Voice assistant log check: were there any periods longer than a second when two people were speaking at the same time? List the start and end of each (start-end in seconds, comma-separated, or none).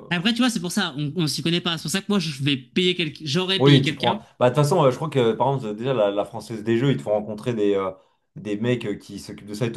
none